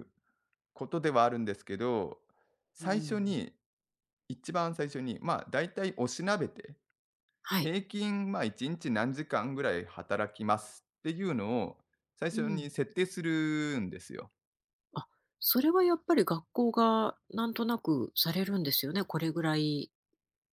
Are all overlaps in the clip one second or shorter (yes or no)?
yes